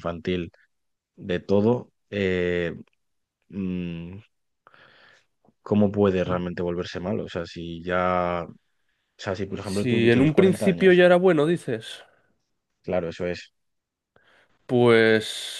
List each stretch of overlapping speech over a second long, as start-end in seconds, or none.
9.6-11.0